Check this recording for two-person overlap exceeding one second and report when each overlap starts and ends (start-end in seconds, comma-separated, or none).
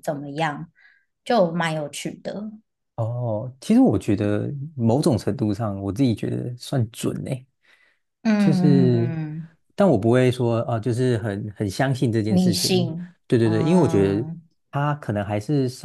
12.3-14.3